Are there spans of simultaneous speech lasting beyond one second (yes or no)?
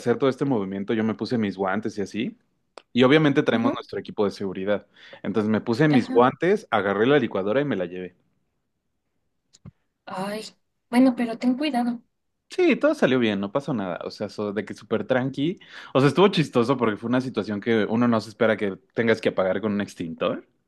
no